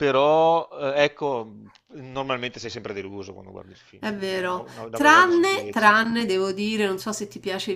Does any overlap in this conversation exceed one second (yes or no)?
yes